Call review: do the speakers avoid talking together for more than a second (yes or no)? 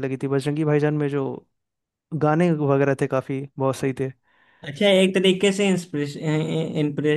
yes